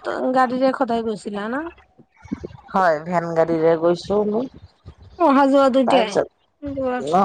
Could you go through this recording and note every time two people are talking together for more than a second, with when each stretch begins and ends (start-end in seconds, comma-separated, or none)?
none